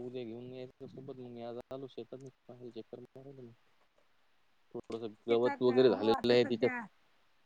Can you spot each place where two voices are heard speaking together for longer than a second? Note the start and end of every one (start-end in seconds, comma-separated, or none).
5.3-6.7